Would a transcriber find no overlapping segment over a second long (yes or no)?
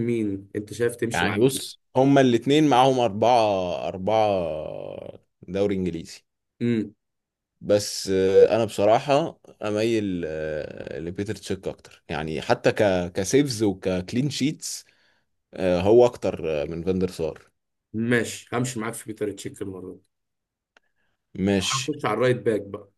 yes